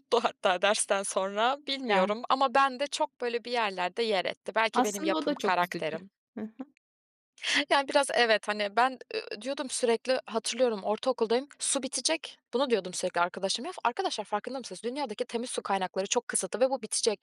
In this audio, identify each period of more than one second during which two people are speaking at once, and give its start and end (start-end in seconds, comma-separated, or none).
4.7-6.0